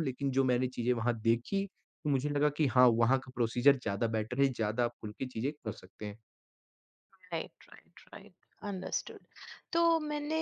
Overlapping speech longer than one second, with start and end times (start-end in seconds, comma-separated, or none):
none